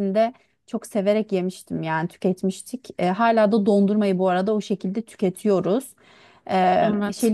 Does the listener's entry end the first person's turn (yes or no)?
no